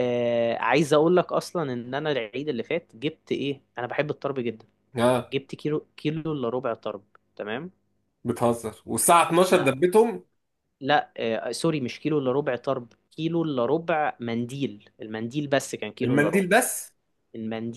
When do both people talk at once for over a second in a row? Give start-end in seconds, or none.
none